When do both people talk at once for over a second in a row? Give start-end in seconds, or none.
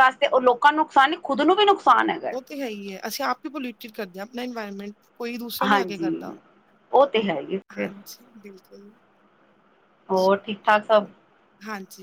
none